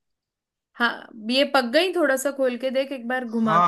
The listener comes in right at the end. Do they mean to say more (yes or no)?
yes